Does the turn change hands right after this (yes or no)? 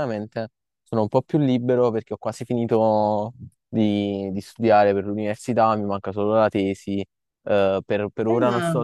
no